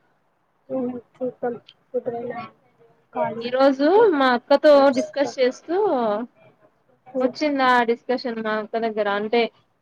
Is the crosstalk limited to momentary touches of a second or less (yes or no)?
yes